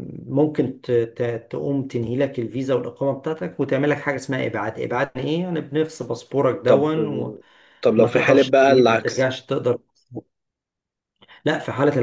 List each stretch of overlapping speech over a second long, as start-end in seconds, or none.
8.0-9.3